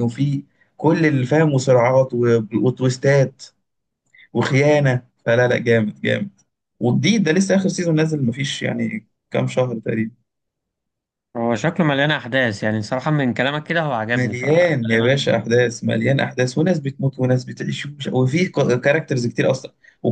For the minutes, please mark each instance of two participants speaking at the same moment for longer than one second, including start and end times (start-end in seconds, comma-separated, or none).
14.1-15.4